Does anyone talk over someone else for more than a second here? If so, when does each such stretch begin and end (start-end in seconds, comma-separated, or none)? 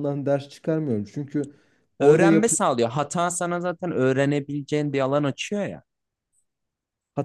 none